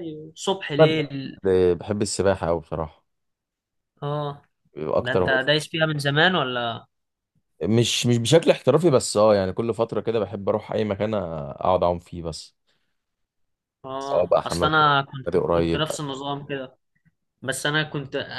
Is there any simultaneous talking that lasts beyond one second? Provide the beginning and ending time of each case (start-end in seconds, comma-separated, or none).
14.0-15.9